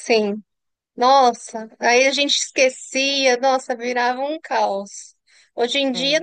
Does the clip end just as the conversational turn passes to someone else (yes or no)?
no